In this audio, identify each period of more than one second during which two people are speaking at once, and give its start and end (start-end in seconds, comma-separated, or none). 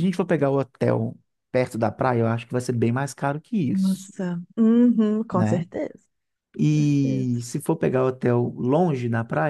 none